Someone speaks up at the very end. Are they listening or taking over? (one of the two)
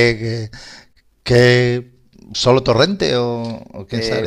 taking over